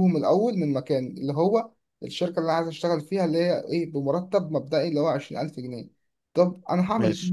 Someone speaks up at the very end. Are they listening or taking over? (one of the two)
listening